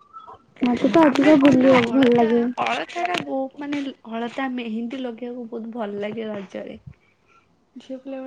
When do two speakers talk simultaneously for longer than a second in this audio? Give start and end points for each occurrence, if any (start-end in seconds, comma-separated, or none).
none